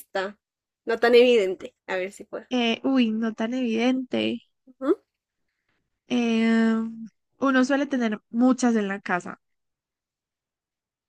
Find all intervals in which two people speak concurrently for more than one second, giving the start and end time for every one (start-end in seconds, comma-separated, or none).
none